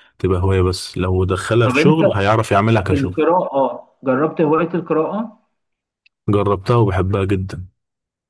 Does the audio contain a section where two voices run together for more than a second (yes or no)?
no